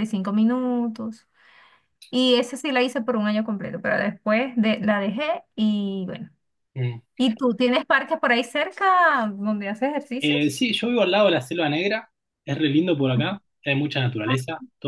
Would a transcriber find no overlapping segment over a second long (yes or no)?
yes